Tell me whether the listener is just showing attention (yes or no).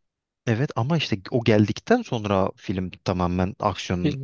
no